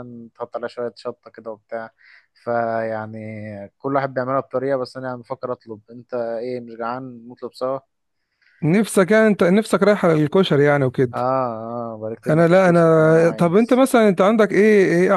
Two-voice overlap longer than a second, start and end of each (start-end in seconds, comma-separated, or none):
12.3-13.8